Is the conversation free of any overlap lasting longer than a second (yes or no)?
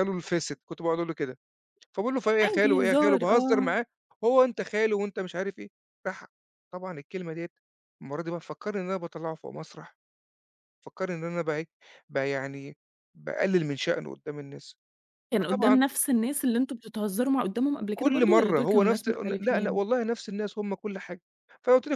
no